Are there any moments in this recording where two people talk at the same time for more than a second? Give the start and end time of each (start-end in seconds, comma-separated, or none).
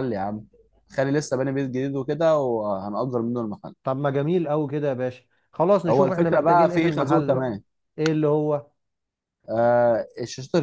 5.9-7.5